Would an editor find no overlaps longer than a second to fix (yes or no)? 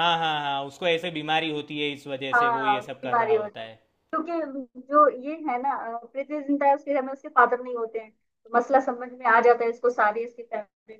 no